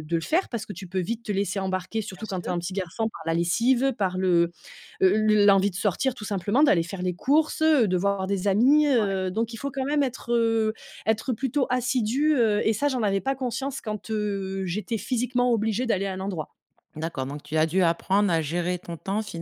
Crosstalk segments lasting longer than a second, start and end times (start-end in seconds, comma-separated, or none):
none